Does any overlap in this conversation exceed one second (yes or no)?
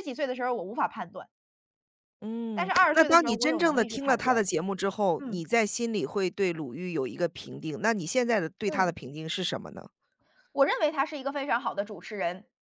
yes